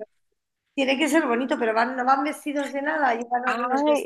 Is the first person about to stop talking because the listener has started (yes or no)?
yes